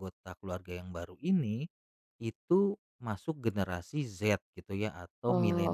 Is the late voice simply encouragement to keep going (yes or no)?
no